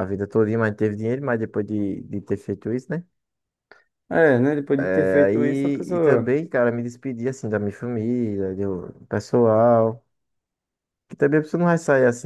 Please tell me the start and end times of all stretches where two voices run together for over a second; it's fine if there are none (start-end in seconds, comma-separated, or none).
4.9-6.3